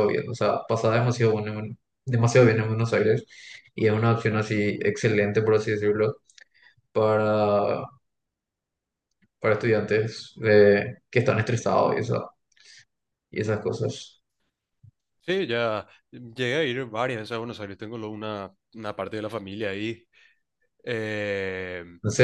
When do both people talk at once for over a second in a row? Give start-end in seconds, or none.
none